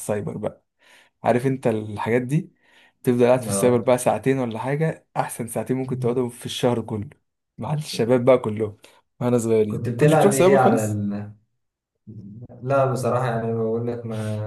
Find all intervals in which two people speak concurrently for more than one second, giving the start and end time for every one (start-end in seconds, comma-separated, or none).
9.7-11.0